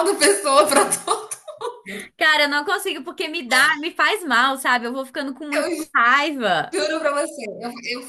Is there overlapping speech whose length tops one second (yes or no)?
no